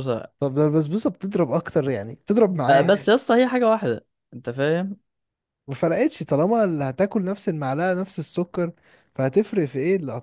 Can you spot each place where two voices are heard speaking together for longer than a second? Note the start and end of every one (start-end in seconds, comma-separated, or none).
none